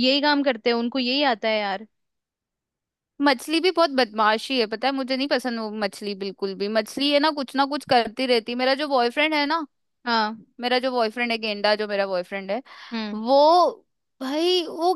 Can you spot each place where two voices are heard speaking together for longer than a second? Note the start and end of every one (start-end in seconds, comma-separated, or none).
none